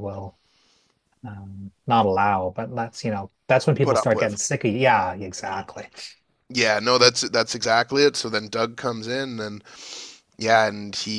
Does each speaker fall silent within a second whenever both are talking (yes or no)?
yes